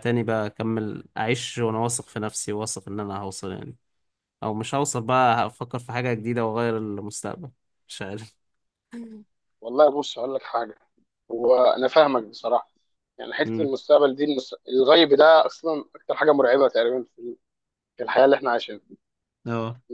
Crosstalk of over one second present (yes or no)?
no